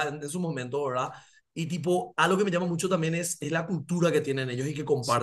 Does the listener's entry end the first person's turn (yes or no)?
yes